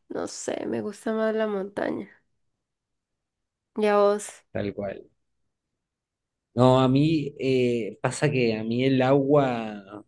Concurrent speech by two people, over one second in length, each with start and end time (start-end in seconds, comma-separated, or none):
none